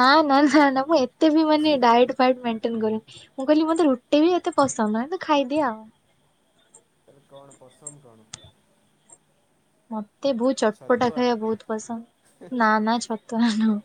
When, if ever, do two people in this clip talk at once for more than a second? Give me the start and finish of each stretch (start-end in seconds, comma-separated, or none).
none